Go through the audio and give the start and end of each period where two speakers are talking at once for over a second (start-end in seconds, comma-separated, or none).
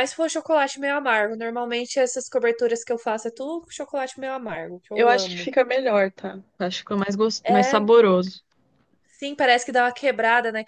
none